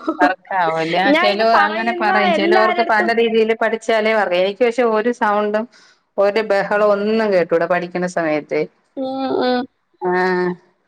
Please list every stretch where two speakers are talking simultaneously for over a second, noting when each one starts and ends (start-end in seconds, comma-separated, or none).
1.1-3.1